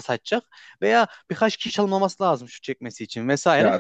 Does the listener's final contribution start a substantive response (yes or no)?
no